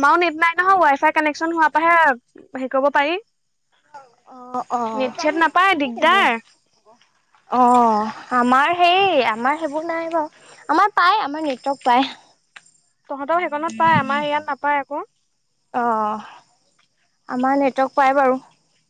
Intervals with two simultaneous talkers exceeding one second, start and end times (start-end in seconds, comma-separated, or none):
none